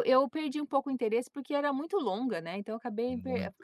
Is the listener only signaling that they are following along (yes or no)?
yes